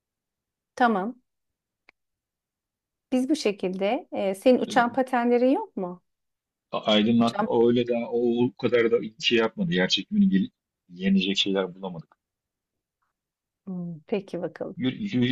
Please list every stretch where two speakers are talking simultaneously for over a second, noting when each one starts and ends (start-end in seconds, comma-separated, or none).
none